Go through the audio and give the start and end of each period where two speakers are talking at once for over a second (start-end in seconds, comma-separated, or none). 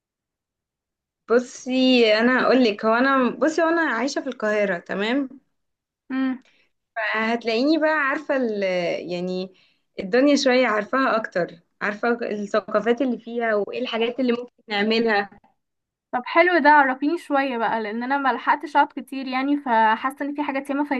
none